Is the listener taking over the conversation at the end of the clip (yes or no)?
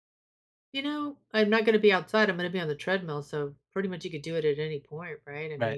yes